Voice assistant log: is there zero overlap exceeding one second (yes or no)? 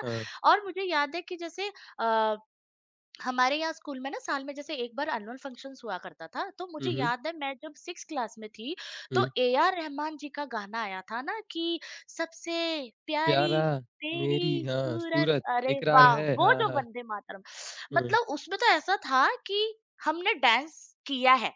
no